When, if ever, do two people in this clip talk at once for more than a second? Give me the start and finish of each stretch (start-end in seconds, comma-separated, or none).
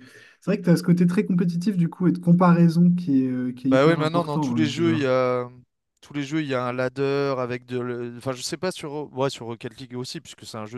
3.7-5.1